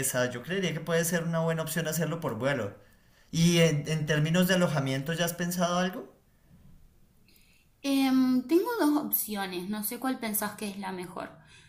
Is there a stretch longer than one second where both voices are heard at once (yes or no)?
no